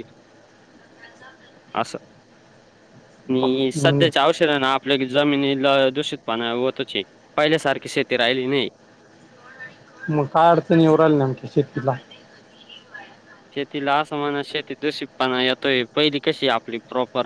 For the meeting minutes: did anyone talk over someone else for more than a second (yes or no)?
no